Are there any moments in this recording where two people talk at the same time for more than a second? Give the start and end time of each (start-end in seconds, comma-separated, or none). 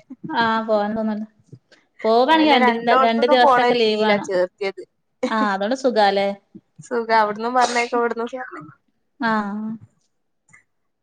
2.4-4.3